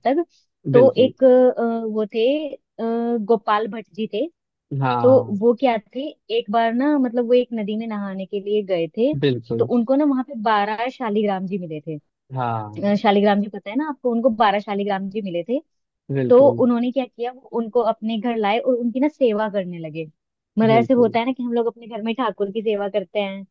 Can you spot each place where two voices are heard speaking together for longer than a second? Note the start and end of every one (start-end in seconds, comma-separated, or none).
none